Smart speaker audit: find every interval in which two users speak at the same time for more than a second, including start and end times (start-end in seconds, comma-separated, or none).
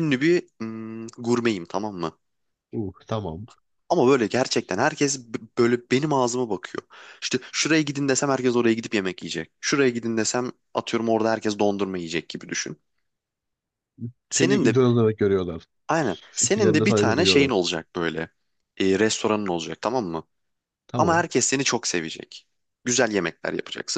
16.3-17.5